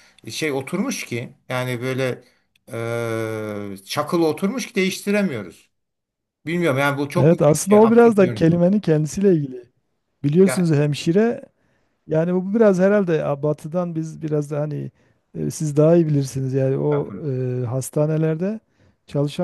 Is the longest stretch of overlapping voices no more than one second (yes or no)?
no